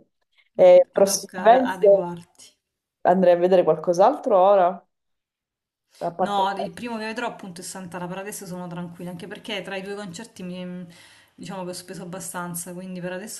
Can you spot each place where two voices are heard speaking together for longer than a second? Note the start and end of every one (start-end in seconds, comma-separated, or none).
0.6-2.1